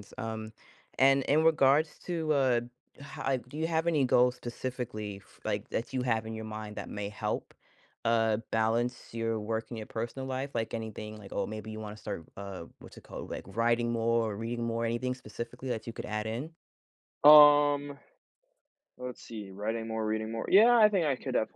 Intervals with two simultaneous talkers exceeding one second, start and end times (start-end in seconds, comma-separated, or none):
none